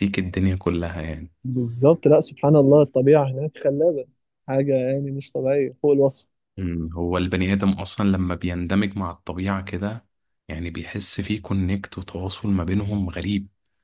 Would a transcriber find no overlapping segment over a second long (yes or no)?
yes